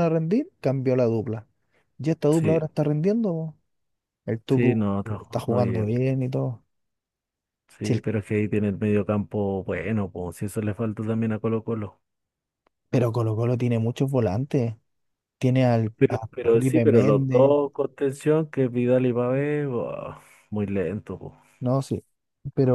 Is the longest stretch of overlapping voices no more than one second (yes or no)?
no